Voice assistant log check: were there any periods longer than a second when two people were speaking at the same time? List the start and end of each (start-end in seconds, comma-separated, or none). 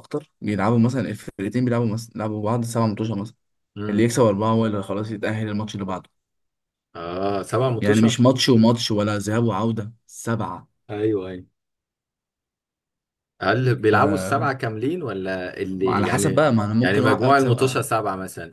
15.9-17.9